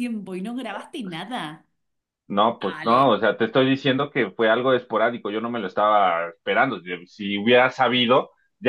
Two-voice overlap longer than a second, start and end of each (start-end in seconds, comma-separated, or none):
none